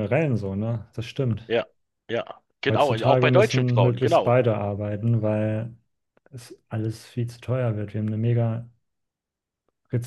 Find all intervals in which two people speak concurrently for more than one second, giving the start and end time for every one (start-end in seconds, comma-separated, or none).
2.7-4.3